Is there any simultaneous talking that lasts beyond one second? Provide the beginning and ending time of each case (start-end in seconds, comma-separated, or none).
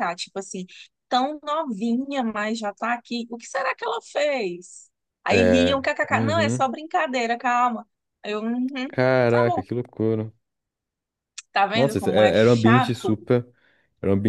5.3-6.7, 11.7-13.2